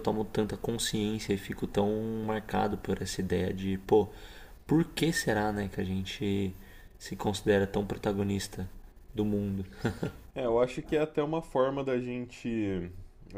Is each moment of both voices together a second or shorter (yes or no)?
yes